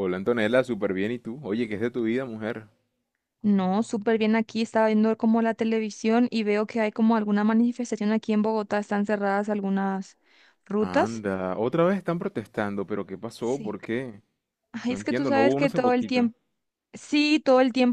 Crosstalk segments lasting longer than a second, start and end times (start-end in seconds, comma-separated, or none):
14.9-16.3